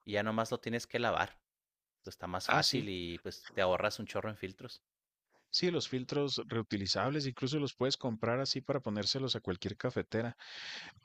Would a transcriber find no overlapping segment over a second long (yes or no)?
yes